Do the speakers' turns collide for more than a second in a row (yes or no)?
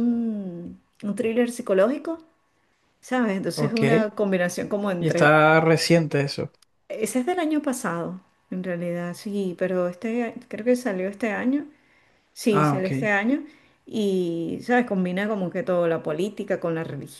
no